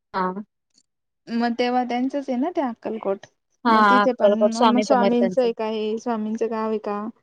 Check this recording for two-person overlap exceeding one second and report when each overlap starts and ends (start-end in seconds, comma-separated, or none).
3.7-5.5